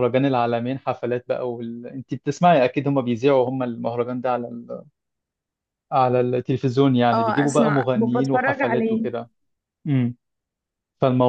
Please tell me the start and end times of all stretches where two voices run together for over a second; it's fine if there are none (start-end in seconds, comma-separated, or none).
7.1-9.1